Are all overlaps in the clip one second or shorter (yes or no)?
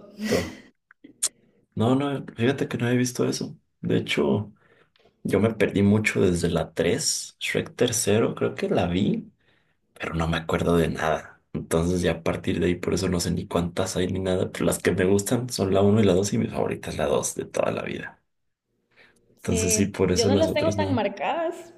no